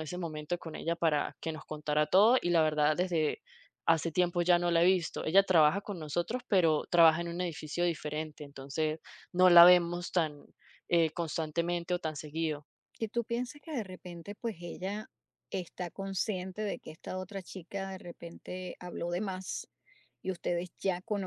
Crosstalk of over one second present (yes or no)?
no